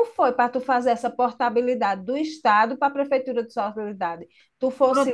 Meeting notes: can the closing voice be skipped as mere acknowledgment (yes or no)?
no